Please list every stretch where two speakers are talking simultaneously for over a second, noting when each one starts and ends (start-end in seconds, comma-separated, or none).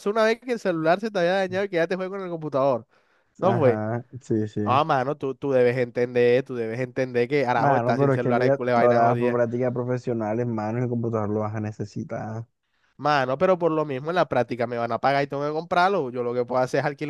7.5-9.4